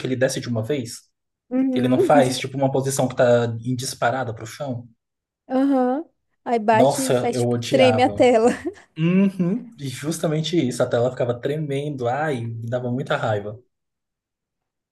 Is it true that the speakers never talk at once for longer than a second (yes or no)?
no